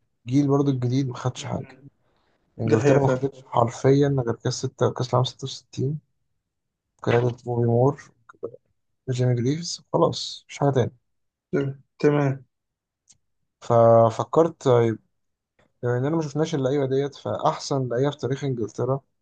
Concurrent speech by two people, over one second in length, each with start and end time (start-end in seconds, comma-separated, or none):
none